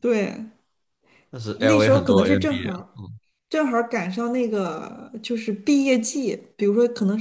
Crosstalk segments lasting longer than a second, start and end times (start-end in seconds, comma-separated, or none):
1.6-2.8